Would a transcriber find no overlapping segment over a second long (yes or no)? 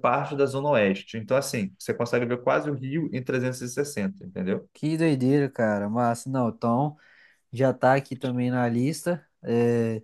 yes